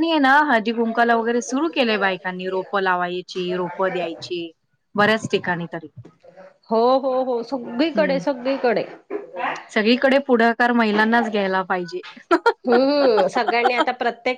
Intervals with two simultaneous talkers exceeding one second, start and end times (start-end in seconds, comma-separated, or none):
none